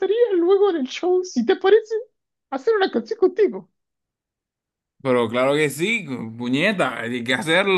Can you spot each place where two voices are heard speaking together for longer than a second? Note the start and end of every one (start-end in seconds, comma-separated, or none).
none